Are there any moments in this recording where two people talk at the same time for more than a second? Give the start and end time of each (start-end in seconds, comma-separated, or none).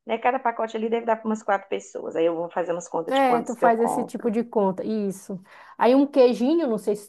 3.1-4.4